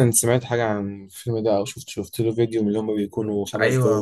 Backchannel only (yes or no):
no